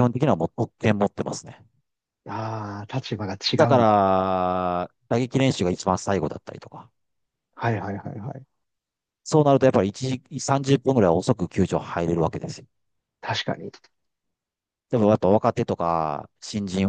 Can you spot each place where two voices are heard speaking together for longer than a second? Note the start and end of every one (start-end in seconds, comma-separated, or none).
none